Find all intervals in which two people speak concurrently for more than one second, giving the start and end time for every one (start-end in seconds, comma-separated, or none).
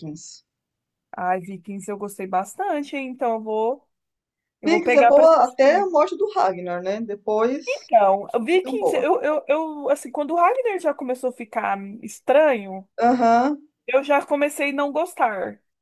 4.7-5.9